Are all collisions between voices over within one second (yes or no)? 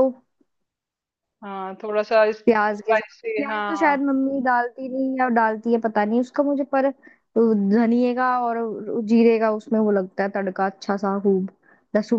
no